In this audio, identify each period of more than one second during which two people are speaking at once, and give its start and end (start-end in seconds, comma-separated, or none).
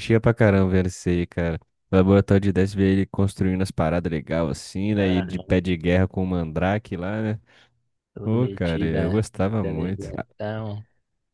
8.2-10.2